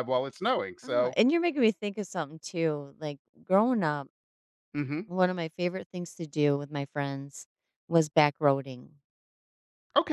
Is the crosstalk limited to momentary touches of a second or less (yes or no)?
yes